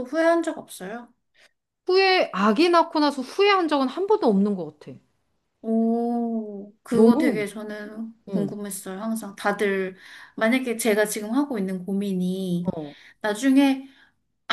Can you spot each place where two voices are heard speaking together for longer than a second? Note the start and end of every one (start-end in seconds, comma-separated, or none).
none